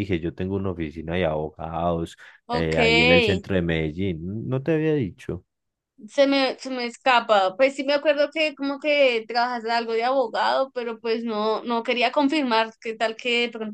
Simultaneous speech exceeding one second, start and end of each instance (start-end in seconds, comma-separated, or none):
none